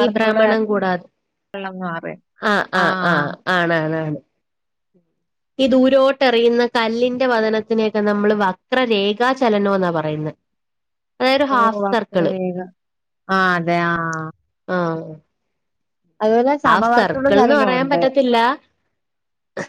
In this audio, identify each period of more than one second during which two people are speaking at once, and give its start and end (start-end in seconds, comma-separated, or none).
16.7-18.0